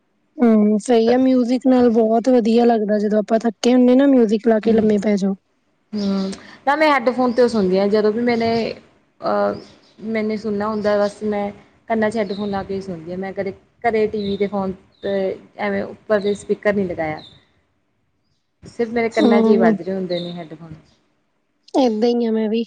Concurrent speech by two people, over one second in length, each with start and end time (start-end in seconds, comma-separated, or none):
none